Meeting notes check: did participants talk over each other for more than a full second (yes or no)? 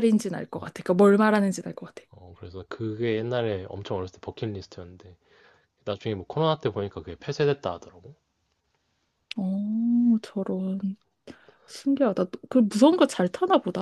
no